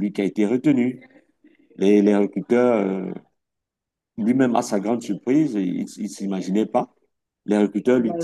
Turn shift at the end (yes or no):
no